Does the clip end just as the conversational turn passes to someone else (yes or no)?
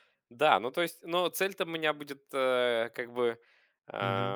no